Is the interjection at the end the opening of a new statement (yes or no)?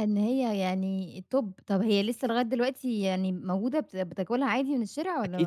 yes